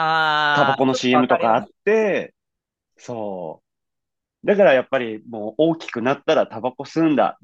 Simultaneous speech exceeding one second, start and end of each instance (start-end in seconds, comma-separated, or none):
0.5-1.7